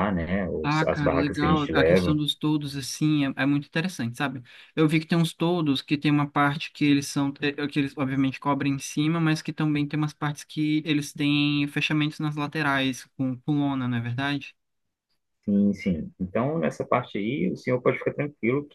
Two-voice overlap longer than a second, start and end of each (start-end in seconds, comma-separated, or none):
0.6-2.2